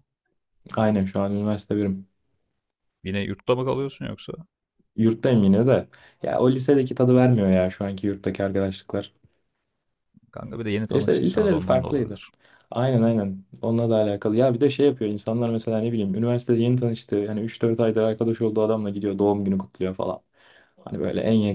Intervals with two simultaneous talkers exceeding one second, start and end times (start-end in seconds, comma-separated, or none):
10.9-12.2